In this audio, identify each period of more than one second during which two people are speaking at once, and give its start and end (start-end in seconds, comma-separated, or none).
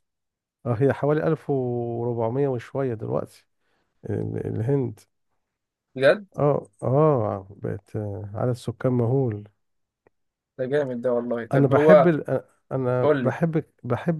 none